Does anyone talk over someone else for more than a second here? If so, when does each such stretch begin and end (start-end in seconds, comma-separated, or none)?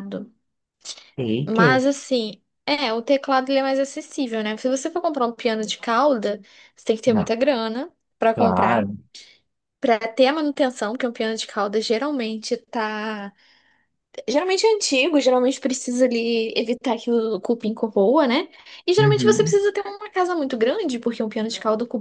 none